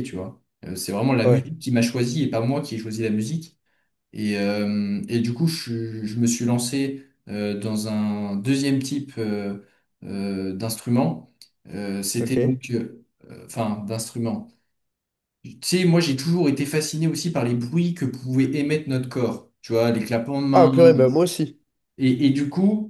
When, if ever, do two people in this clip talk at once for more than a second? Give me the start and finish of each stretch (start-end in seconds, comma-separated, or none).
none